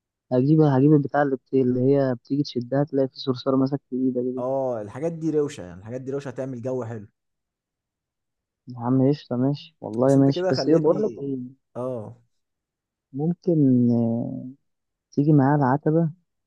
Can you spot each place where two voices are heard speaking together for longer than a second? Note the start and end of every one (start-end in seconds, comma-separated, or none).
10.1-11.2